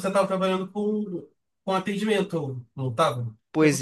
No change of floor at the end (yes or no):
no